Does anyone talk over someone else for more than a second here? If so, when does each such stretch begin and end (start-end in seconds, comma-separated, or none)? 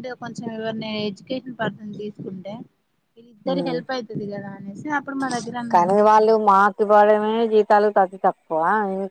none